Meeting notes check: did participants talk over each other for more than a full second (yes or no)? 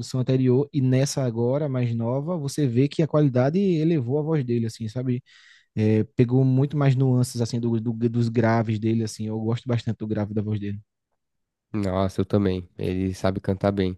no